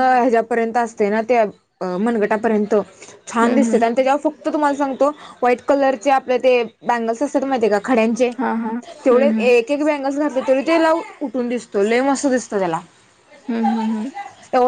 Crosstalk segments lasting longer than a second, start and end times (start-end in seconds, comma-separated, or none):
none